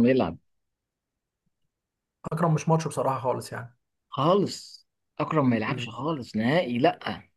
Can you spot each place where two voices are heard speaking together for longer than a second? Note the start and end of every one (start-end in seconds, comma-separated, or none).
none